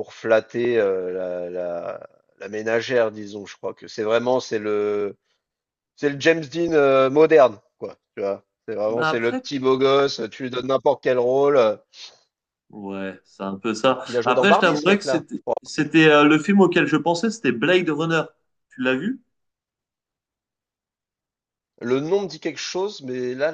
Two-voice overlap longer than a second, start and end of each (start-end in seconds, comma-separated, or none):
14.1-15.5